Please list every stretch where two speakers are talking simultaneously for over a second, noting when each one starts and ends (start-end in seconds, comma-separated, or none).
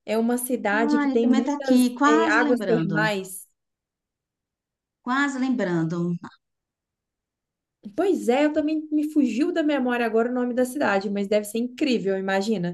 1.0-3.1